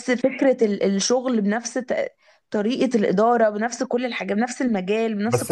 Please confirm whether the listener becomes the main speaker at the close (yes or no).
yes